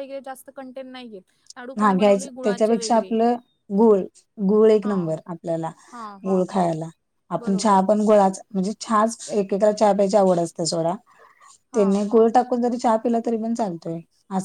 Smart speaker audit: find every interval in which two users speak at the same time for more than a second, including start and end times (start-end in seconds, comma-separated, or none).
1.8-3.1